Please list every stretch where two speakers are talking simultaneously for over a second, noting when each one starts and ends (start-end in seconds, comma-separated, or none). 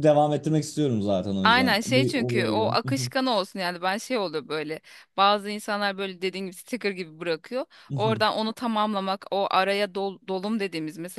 1.4-2.8